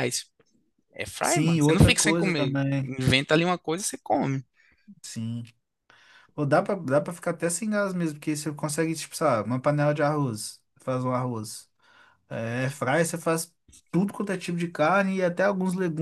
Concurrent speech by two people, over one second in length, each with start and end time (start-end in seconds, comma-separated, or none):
1.2-2.9